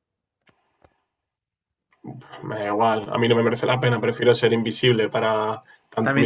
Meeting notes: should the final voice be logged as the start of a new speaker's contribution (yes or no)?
yes